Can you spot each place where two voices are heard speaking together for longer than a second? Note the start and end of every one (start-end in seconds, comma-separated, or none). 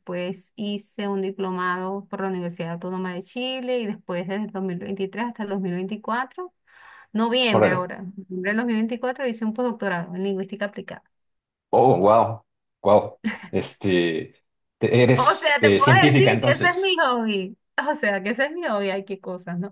15.2-17.0